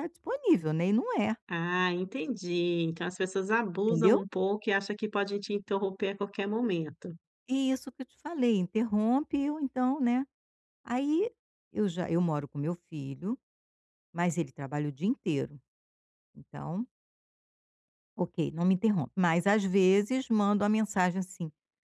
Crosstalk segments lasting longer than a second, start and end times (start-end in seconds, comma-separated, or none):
none